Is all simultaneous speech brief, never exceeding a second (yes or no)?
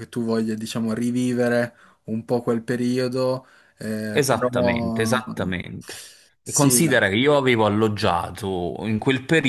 yes